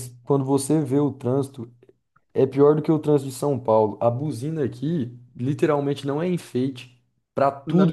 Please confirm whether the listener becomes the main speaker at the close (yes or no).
no